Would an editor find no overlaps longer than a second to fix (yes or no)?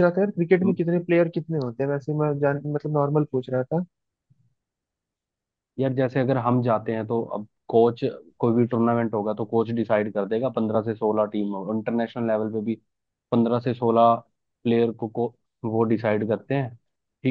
yes